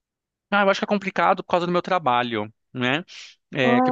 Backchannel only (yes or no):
yes